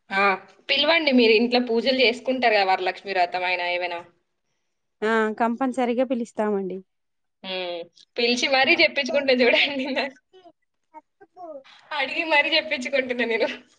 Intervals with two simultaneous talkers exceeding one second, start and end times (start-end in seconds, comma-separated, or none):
none